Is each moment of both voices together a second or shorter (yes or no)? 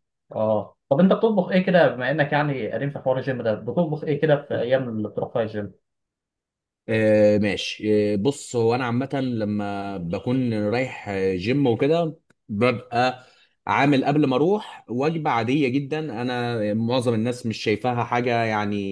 yes